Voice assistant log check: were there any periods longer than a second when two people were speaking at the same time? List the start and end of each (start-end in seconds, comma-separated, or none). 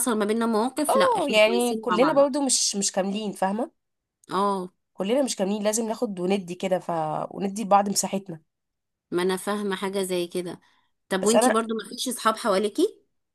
0.9-2.2